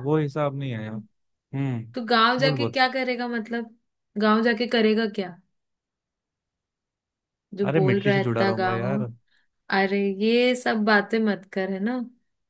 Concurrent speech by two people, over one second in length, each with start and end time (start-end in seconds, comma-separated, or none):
7.7-9.0